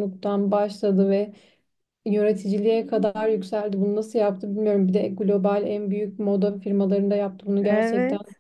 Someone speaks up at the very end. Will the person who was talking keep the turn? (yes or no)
no